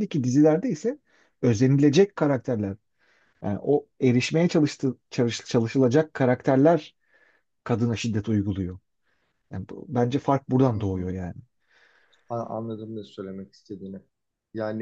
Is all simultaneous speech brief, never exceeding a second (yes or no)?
yes